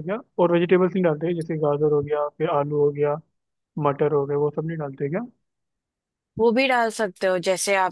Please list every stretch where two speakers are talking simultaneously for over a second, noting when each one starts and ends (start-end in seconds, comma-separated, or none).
none